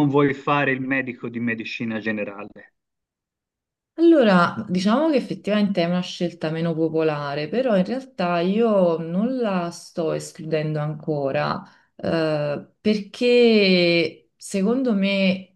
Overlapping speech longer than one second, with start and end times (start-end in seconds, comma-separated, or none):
none